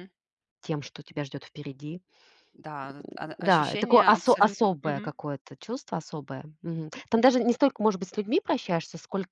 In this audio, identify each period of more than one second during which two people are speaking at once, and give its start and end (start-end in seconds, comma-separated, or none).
3.4-5.1